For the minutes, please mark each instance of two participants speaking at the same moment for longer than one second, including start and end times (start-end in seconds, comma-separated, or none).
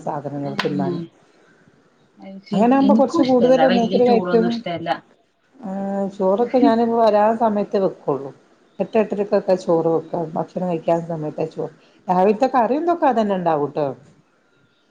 2.5-4.5